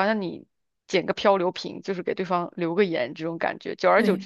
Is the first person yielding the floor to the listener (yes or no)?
no